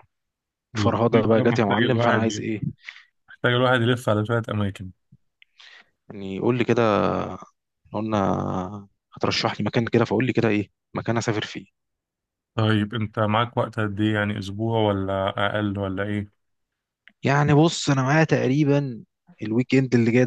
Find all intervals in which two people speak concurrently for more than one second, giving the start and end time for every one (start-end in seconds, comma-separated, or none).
0.8-2.5